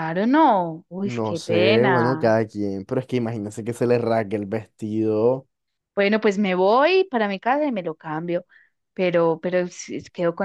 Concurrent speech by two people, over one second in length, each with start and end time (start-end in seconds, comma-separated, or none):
1.0-2.4